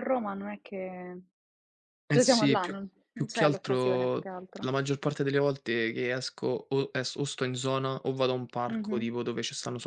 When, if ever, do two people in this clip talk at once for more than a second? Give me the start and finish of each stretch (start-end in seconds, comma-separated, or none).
2.1-4.7